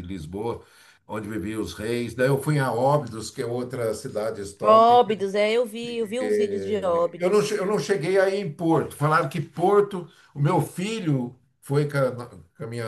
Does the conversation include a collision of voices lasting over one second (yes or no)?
no